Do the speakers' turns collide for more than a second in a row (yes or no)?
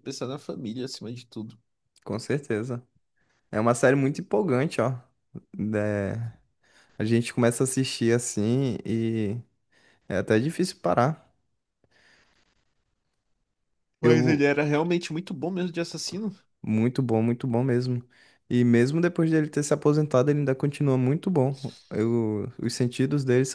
no